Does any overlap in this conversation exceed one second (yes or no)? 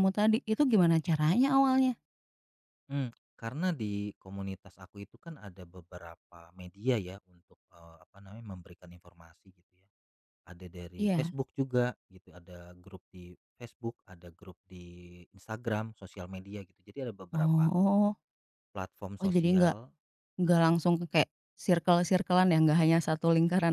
no